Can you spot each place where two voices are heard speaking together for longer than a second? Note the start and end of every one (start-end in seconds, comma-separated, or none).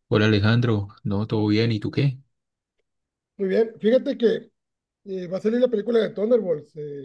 none